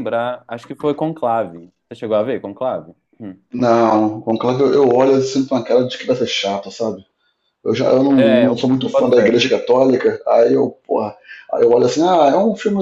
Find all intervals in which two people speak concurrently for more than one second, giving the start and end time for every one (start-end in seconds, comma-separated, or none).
8.1-9.4